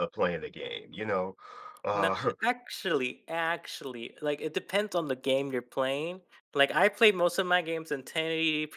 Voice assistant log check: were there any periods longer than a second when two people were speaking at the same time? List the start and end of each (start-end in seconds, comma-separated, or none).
none